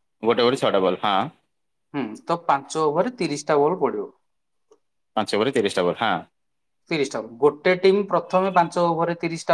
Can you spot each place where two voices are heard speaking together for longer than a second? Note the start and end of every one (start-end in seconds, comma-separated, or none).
none